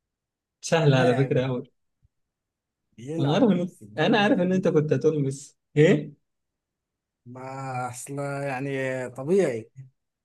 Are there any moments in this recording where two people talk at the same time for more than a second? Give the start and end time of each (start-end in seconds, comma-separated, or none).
3.2-4.8